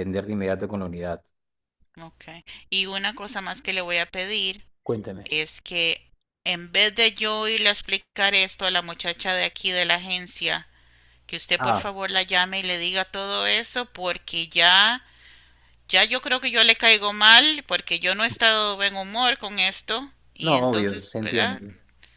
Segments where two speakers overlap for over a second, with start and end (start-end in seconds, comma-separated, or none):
20.4-21.6